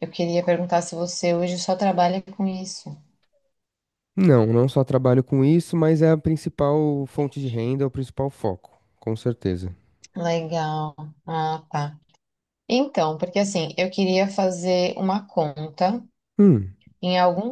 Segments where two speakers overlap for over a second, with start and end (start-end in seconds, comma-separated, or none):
none